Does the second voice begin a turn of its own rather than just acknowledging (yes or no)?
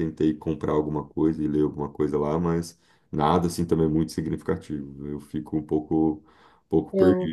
no